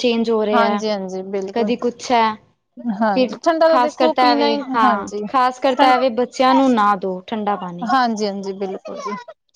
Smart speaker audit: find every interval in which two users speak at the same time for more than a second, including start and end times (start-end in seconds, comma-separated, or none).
3.1-5.2